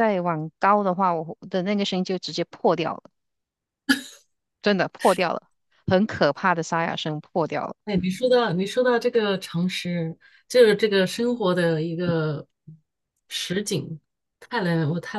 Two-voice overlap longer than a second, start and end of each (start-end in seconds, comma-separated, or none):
none